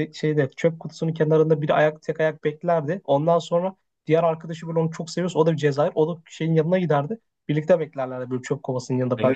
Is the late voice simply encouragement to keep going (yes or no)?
no